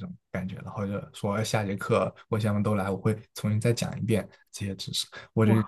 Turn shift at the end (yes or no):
yes